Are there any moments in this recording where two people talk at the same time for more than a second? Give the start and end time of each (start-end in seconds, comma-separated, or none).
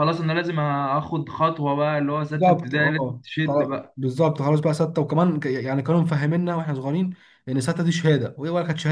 2.3-4.0